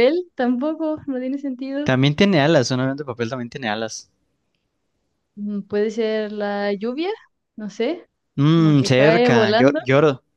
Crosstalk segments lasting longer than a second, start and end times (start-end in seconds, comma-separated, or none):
8.5-9.8